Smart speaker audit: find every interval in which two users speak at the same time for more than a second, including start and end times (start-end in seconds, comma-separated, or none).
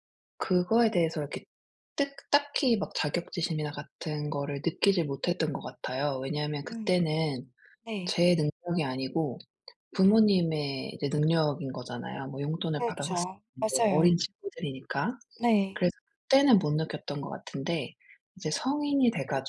12.8-14.1